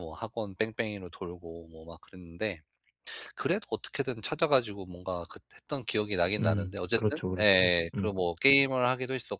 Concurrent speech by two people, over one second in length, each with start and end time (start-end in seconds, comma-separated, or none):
6.4-8.1